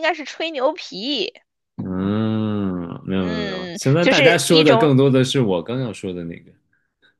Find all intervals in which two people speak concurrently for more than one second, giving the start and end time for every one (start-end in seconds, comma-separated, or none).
3.2-4.9